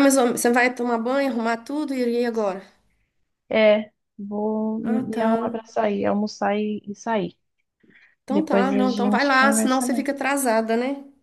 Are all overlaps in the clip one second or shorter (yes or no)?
no